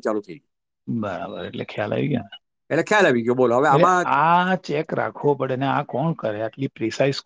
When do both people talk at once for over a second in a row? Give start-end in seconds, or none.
2.6-4.1